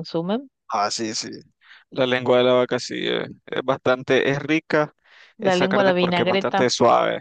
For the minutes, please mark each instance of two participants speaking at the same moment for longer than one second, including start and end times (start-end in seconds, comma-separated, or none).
5.4-6.7